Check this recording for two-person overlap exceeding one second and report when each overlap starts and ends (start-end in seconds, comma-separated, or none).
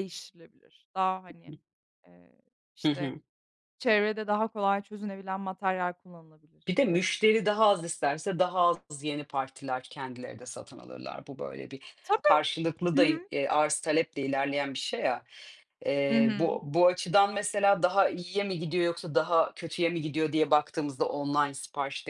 none